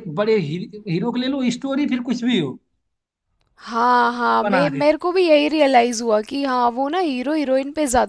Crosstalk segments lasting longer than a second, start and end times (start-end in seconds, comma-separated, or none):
none